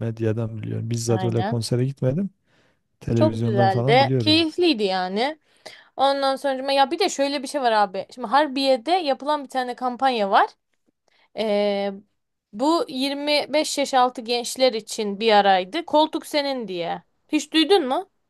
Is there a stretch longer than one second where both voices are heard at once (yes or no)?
yes